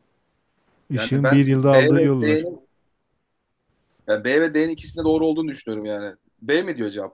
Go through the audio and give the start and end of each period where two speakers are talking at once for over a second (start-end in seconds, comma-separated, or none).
0.9-2.5